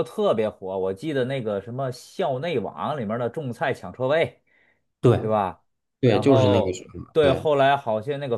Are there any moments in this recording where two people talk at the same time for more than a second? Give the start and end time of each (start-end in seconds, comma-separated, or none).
6.0-7.5